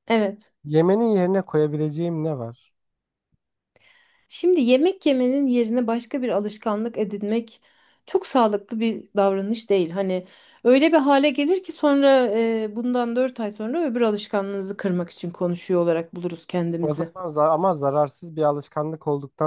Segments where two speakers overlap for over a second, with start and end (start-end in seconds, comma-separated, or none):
none